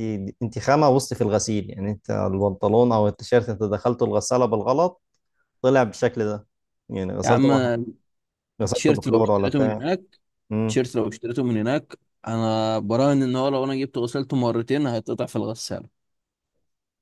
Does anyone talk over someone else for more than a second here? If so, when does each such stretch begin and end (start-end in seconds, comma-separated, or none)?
8.6-9.8